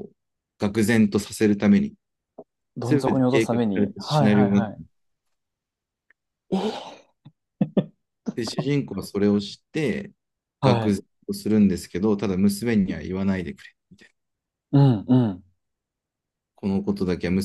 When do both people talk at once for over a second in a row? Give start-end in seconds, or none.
2.8-4.7